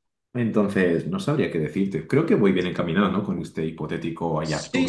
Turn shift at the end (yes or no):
yes